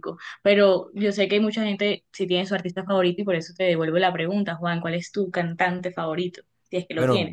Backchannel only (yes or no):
no